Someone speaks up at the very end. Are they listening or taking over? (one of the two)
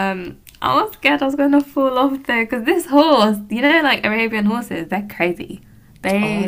listening